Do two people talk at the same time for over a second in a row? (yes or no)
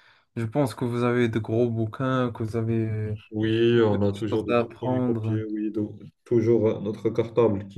yes